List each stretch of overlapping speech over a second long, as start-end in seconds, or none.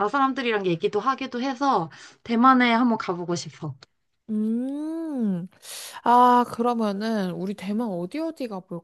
none